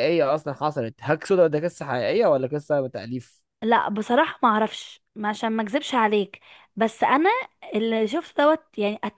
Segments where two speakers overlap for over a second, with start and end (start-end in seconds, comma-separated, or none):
none